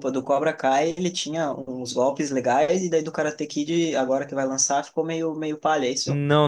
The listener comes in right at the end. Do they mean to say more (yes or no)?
yes